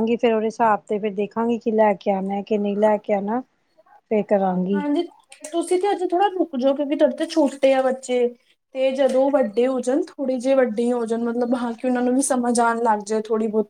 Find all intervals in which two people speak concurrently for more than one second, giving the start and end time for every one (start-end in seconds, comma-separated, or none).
none